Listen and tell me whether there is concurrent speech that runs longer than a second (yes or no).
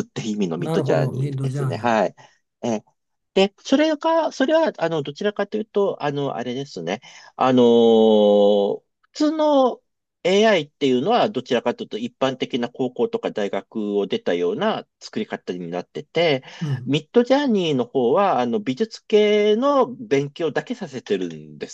yes